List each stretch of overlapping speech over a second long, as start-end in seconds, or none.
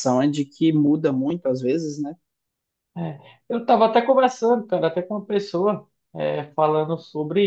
none